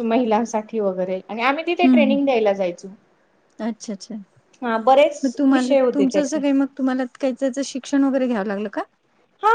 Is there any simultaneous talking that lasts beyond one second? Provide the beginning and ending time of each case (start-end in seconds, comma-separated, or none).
4.6-6.4